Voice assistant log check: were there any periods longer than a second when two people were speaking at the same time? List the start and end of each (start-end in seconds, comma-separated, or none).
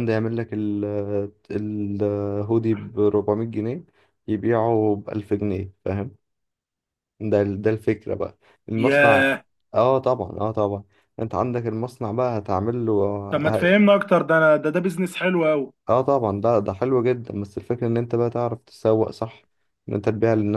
none